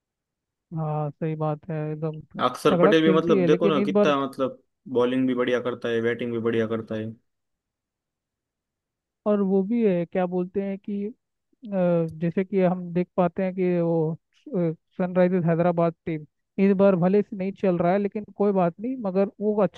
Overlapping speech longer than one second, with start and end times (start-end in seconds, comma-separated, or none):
2.7-4.1